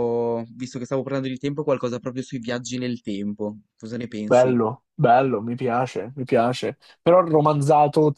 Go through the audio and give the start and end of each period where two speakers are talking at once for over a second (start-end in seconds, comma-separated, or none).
none